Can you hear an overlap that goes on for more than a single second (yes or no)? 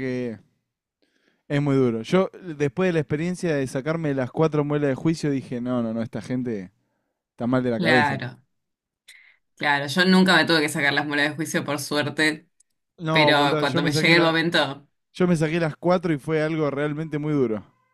yes